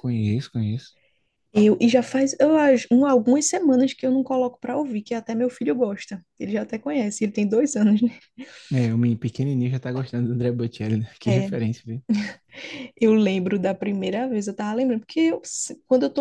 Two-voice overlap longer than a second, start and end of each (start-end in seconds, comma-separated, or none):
none